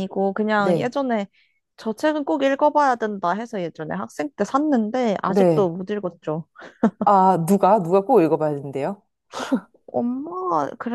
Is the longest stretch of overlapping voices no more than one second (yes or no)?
yes